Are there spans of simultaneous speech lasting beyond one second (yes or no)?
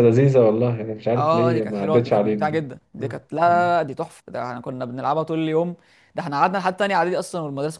yes